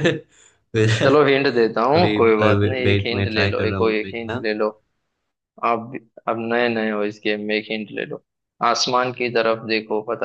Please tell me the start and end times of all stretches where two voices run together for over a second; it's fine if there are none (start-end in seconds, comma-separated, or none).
2.9-4.4